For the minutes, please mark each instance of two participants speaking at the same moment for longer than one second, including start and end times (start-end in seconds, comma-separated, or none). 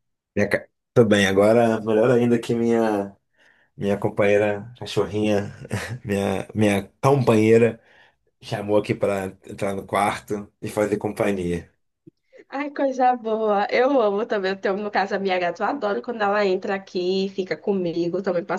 none